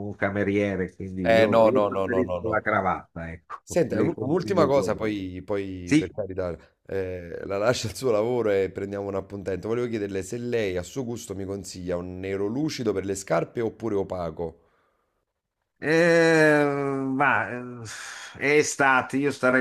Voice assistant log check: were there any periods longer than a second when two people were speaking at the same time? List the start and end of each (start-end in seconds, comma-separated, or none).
1.2-2.7, 3.6-5.1